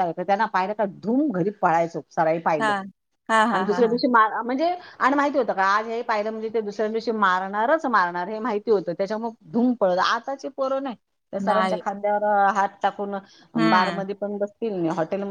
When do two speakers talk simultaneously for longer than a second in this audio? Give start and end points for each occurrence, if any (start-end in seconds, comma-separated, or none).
none